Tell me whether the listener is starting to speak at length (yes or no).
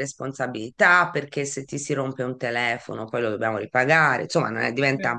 no